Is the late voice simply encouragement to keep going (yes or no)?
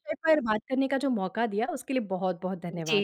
no